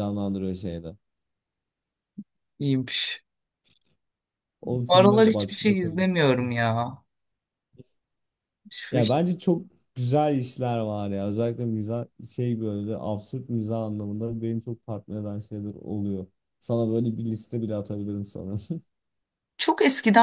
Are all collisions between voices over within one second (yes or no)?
no